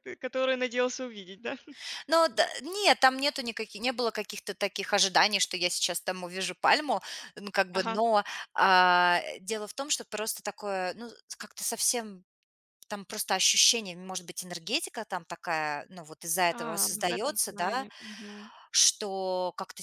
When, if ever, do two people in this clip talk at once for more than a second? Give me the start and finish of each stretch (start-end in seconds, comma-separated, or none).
16.5-17.9